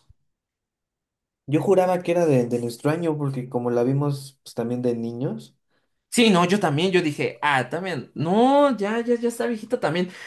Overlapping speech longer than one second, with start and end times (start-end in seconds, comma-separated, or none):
none